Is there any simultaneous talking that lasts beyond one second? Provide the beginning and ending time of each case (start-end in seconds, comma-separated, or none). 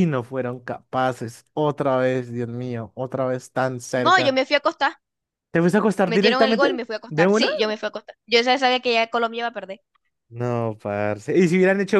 6.0-7.5